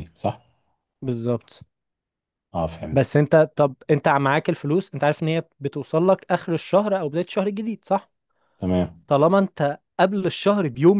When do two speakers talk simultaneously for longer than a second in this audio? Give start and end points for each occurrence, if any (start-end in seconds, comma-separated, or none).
none